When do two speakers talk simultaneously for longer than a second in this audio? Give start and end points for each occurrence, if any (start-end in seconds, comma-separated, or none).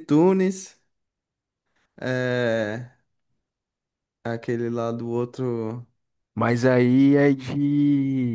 none